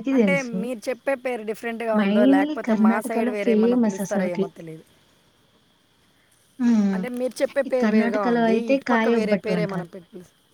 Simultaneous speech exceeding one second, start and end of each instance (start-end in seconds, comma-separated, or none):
2.0-4.4, 7.7-9.9